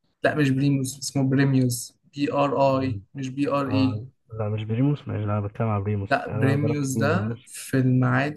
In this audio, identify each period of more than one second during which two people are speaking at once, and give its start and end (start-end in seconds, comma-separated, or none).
6.1-7.5